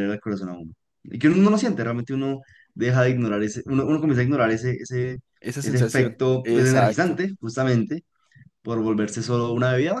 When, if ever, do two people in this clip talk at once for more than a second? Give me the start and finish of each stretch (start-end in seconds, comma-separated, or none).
5.6-7.2